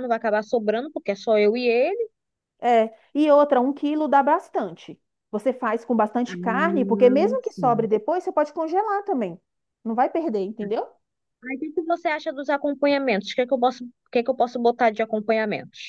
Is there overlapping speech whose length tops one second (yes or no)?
yes